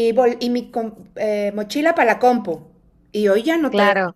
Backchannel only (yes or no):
no